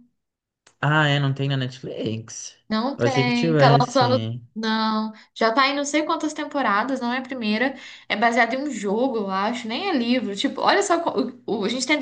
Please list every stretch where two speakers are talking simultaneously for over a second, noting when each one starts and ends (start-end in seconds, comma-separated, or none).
3.0-4.4